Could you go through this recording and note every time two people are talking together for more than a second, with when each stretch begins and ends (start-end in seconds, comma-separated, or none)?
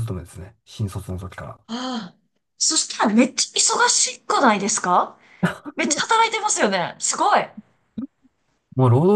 none